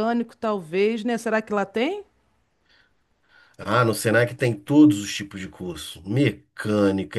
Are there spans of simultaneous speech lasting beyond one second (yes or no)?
no